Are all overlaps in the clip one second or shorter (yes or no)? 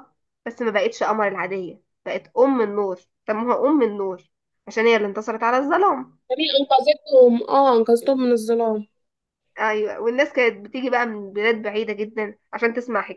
yes